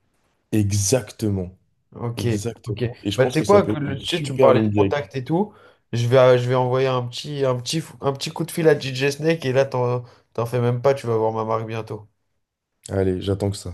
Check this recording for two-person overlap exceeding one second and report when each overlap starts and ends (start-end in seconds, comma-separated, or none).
3.2-5.2